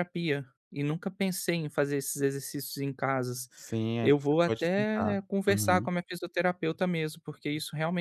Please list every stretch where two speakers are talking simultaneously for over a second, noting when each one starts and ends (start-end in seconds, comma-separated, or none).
4.0-5.9